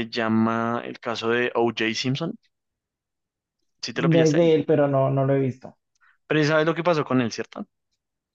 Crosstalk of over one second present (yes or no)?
no